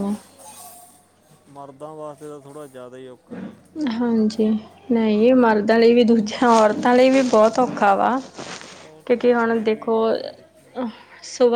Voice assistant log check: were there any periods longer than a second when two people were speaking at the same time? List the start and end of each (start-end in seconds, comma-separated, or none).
9.1-10.8